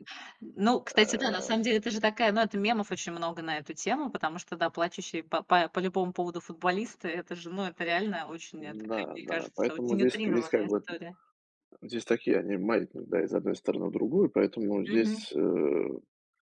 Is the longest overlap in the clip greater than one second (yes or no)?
yes